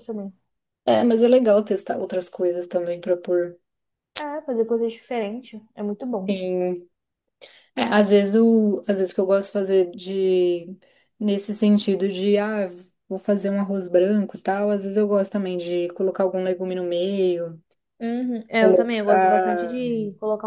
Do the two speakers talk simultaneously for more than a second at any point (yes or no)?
yes